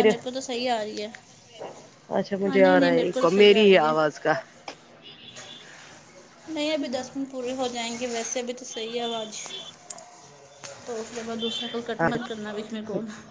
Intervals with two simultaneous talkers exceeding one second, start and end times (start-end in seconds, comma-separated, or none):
2.4-3.9